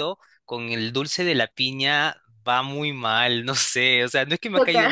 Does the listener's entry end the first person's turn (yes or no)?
no